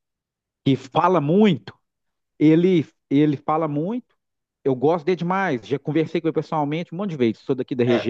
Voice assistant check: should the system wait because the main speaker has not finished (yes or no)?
yes